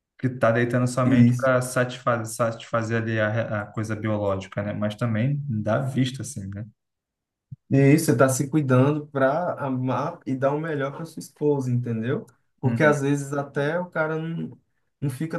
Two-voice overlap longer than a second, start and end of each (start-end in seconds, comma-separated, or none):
none